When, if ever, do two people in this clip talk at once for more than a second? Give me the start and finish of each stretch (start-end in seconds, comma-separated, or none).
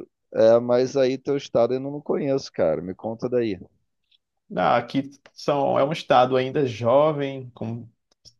none